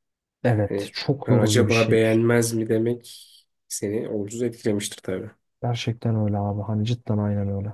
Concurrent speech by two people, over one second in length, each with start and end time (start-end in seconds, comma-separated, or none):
0.6-2.0